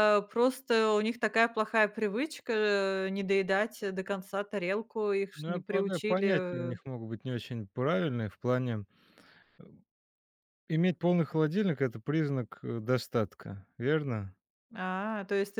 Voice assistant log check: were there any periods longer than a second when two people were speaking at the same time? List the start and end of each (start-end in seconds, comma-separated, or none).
5.3-6.9